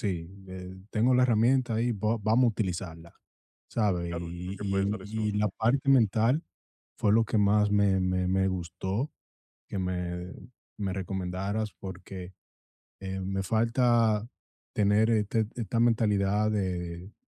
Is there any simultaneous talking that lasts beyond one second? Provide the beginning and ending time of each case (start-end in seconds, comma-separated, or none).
3.9-5.4